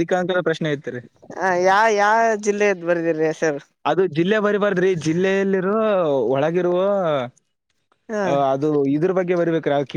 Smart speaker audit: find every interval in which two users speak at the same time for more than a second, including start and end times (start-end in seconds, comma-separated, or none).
none